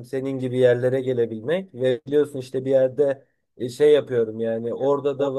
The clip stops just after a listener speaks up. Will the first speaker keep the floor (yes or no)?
yes